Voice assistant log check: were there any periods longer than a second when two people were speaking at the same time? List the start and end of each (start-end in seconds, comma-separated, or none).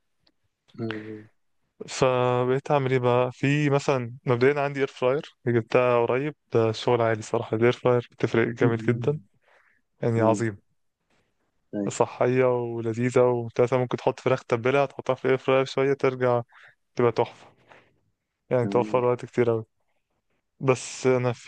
none